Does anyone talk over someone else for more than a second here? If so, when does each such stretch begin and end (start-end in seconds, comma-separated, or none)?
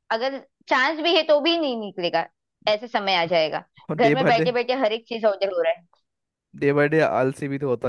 none